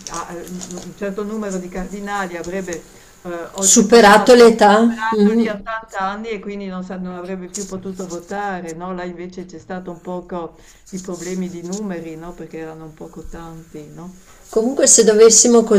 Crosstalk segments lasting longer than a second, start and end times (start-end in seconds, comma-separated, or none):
3.6-5.6